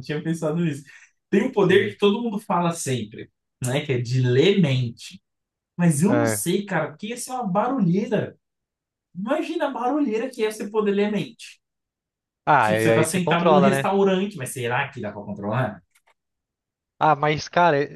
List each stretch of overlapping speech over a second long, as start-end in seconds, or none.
12.6-13.9